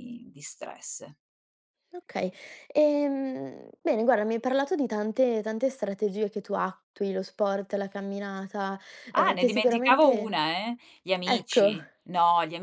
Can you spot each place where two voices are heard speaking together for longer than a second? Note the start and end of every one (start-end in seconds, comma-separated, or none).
9.2-10.4